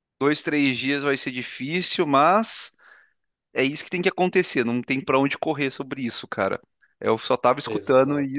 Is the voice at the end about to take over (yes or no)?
no